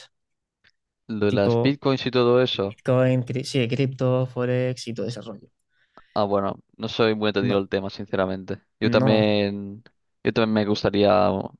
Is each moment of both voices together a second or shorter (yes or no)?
yes